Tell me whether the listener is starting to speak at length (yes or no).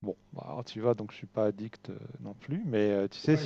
yes